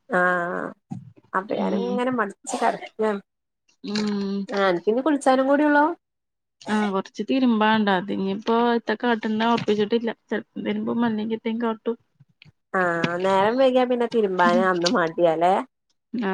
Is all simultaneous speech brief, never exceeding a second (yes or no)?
yes